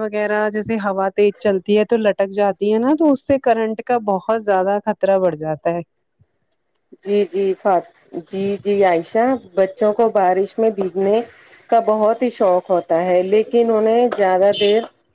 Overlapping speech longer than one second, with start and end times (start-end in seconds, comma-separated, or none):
none